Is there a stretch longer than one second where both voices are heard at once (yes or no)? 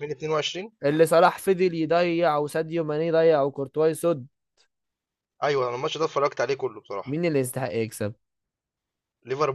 no